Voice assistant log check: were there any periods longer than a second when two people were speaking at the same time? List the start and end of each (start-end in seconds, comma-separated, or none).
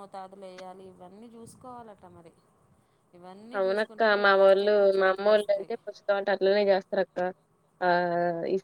3.6-5.7